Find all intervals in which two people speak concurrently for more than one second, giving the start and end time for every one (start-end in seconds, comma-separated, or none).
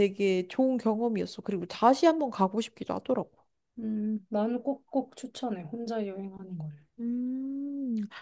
none